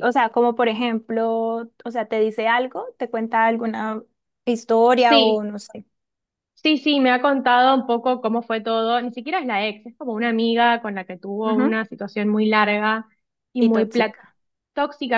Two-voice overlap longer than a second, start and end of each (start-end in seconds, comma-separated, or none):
none